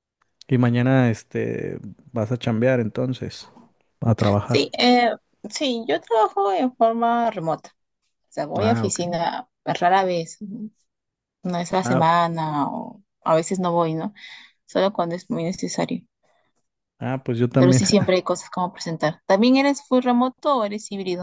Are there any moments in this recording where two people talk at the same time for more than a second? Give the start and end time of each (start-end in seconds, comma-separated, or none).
none